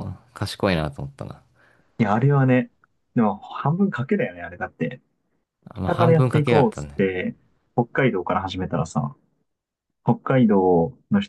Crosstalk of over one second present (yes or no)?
yes